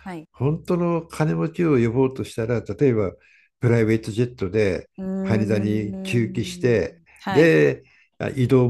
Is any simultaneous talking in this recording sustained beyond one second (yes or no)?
yes